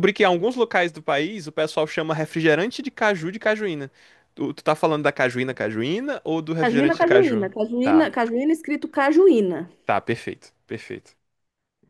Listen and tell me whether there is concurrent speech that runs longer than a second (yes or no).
yes